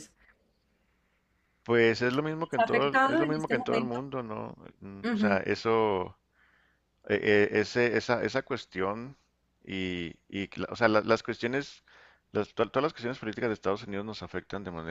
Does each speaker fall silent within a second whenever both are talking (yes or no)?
no